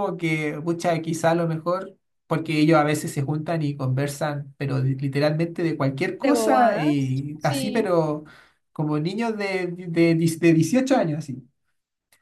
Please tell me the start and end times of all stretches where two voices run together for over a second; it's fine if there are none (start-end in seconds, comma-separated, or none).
6.1-7.9